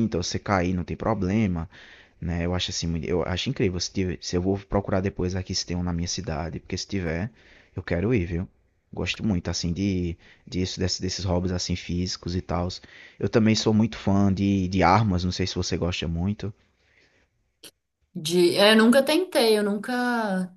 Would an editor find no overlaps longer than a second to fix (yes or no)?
yes